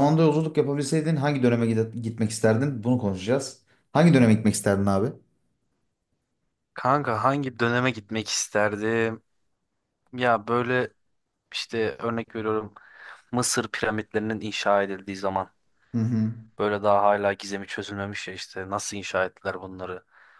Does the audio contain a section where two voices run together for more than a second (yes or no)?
no